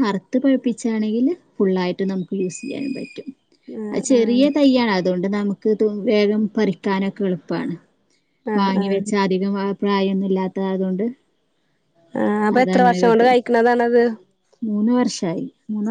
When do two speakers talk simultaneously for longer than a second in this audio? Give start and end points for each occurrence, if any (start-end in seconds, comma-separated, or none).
none